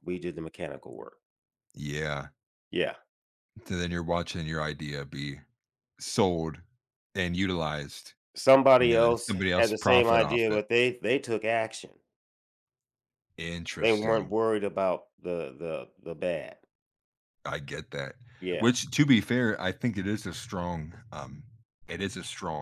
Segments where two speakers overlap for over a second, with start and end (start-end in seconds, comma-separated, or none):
8.8-10.6